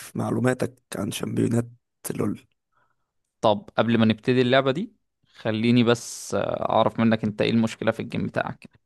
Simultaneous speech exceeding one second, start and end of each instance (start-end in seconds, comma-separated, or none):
none